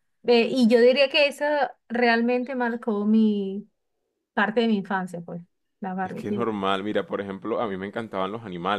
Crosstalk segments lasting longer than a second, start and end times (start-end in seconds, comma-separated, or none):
none